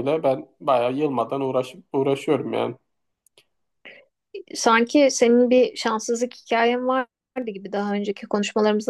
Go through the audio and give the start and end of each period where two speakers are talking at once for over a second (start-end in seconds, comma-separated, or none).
none